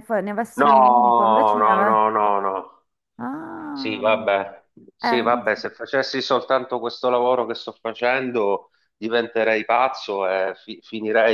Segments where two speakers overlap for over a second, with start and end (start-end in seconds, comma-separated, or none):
0.6-2.0